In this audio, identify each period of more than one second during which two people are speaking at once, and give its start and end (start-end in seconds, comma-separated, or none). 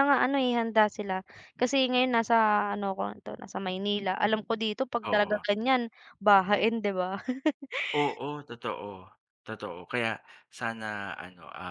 none